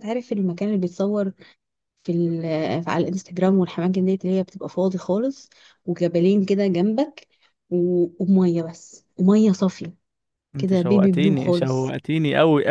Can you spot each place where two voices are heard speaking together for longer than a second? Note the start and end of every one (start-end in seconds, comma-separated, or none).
10.6-11.9